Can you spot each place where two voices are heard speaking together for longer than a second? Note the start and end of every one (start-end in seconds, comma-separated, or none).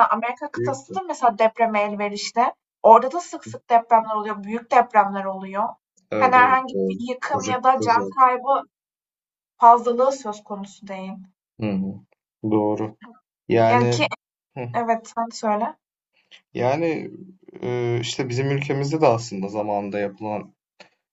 6.2-8.2